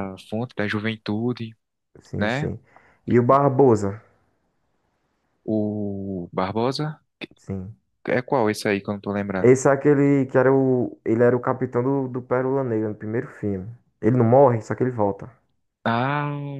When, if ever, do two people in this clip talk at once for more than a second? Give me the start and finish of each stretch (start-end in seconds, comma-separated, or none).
none